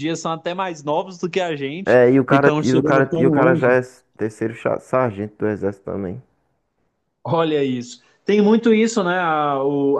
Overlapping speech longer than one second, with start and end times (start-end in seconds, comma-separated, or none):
1.9-3.7